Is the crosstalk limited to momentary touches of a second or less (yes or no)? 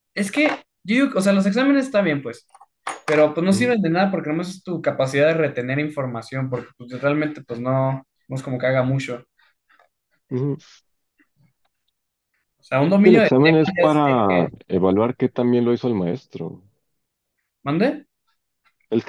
no